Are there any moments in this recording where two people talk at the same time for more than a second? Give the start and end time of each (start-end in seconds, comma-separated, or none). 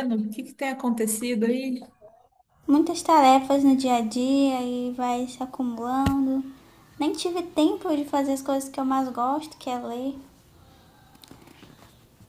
none